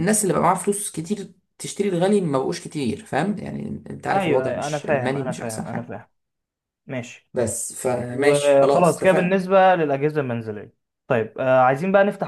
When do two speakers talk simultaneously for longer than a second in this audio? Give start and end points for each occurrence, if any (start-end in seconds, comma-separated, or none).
4.1-6.0, 8.1-9.4